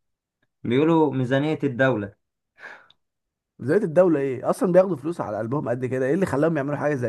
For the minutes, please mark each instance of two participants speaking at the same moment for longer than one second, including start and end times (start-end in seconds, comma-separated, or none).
none